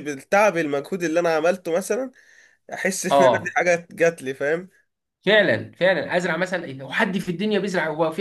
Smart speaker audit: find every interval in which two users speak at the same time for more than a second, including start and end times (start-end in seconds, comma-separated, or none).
none